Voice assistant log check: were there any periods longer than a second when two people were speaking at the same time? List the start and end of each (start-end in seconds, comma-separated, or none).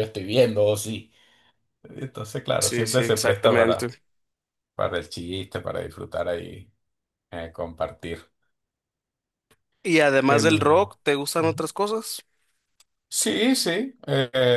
2.6-4.0